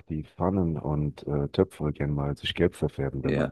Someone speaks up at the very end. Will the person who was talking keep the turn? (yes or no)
no